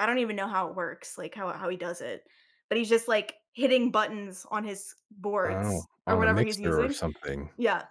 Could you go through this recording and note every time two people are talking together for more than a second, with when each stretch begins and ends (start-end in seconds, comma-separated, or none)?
5.5-7.0